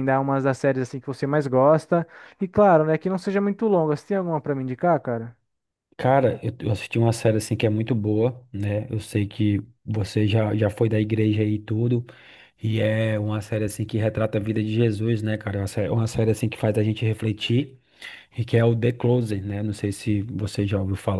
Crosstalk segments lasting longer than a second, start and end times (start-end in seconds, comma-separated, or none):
none